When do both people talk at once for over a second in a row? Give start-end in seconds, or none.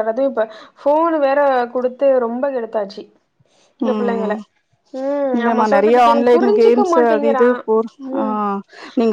5.4-7.5